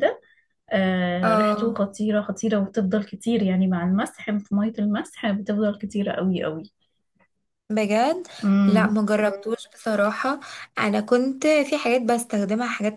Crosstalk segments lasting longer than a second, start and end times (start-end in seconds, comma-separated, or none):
none